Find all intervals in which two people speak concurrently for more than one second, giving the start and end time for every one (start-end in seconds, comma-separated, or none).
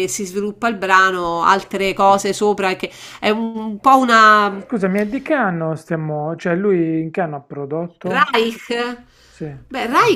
none